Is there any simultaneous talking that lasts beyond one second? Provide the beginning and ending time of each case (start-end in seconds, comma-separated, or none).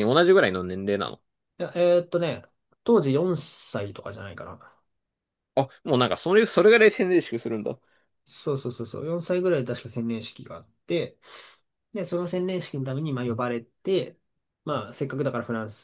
none